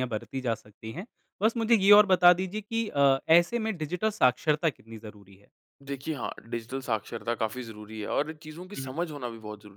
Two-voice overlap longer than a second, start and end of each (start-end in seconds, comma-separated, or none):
none